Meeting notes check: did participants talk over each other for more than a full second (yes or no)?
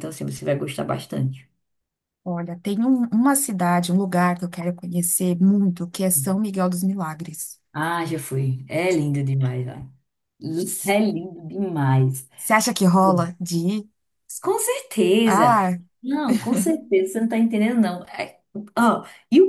no